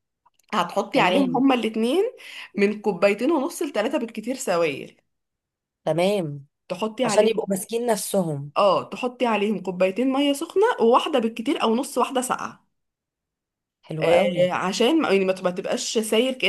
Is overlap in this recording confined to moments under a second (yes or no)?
yes